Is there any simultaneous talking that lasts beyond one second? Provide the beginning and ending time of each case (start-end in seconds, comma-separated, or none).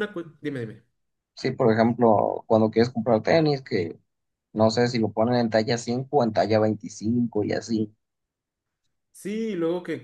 none